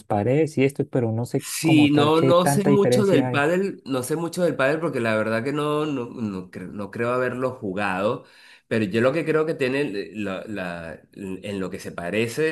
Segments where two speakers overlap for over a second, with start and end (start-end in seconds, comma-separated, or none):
1.6-3.5